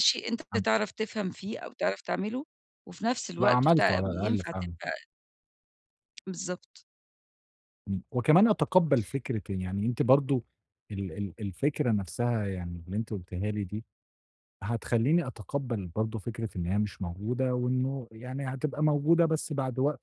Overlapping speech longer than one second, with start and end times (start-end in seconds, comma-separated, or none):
3.4-4.7